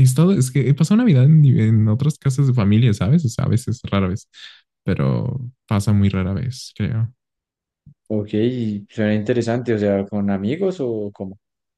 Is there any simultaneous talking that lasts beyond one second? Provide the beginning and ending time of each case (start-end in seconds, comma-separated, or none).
none